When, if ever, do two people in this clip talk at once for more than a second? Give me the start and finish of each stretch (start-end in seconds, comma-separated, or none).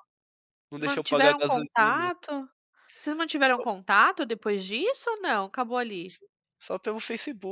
0.8-2.1